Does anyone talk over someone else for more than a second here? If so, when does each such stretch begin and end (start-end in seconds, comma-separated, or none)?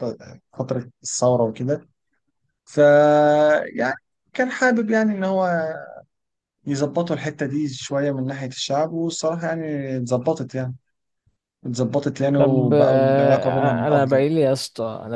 12.4-14.2